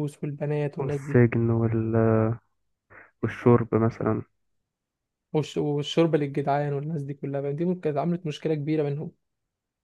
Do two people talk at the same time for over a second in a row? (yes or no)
no